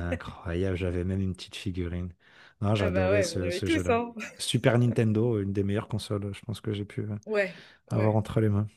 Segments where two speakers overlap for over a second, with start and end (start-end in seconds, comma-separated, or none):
2.8-4.0